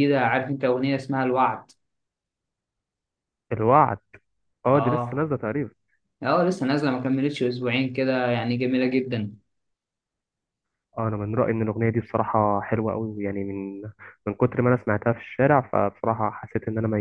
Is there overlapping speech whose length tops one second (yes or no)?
no